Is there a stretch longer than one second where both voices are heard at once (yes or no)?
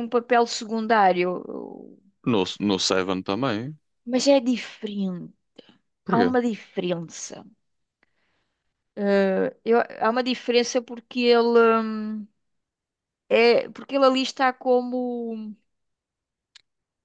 no